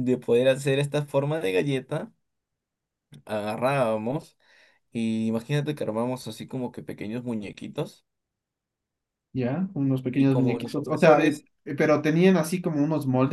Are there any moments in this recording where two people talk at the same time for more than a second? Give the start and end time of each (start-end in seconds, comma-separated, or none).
10.2-11.4